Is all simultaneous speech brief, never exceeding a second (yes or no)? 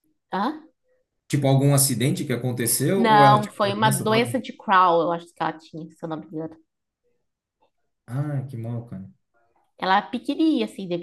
no